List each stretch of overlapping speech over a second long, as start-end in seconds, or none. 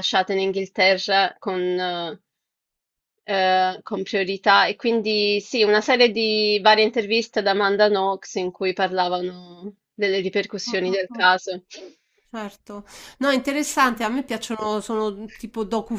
none